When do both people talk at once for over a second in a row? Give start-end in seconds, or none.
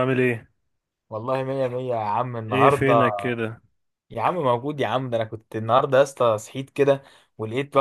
none